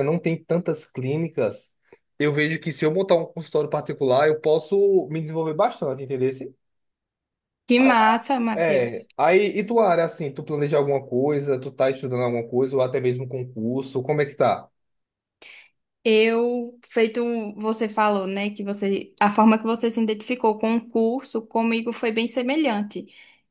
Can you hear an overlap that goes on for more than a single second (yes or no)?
no